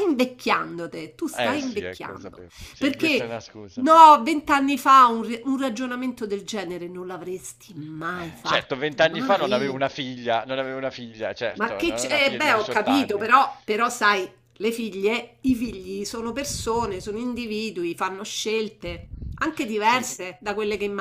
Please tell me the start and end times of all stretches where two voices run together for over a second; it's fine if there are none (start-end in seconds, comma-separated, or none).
1.4-3.9, 8.1-9.8, 11.5-13.3